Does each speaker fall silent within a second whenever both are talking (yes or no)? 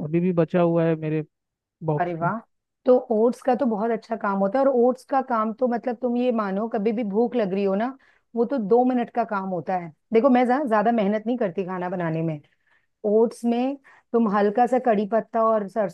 yes